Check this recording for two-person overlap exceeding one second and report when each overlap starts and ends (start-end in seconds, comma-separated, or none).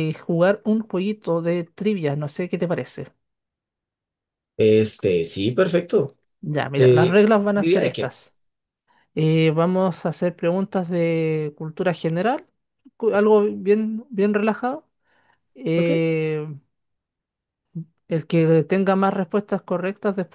6.8-8.2